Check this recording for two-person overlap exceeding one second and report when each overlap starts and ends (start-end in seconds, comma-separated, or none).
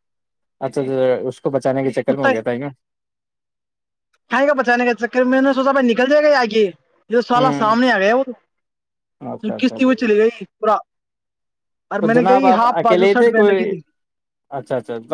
12.0-13.7